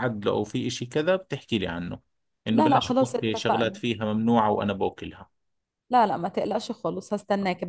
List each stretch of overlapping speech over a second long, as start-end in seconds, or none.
2.5-3.8